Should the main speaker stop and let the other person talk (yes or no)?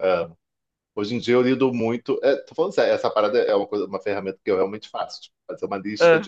no